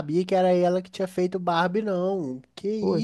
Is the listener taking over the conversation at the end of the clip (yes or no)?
yes